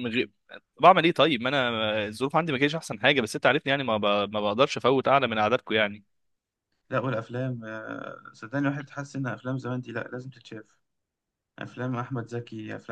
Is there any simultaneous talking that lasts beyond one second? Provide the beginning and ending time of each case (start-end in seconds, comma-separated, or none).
none